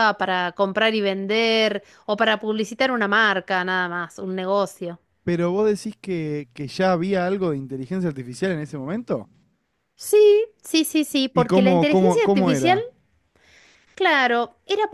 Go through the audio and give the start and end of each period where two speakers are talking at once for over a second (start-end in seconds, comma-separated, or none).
11.3-12.8